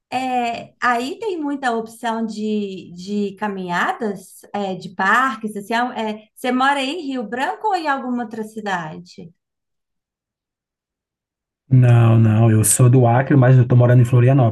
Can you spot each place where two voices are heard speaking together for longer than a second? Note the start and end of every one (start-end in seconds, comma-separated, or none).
none